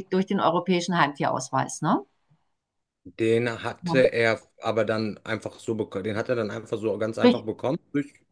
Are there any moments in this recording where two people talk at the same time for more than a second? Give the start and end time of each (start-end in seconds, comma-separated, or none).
none